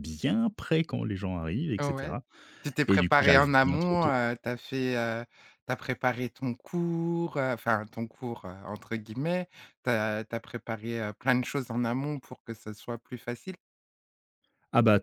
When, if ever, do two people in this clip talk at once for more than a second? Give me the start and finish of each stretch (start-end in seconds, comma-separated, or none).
2.9-4.1